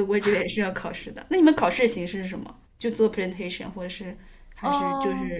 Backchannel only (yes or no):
no